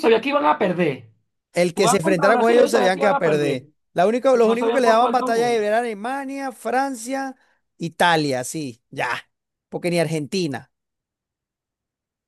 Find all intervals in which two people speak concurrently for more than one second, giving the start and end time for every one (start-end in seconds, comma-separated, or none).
1.7-3.7, 4.3-5.6